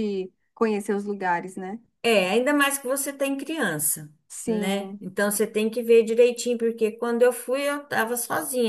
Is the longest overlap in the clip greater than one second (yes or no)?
no